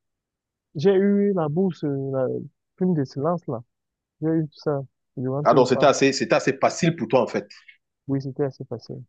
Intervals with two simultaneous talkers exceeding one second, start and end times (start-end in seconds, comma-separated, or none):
none